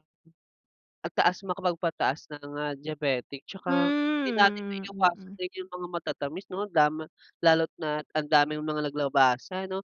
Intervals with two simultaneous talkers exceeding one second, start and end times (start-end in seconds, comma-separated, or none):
3.7-5.4